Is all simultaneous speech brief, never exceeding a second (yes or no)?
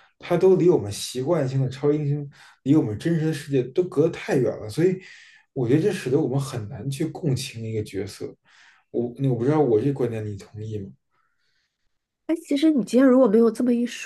yes